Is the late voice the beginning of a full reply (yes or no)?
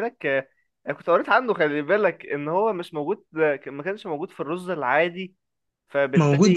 yes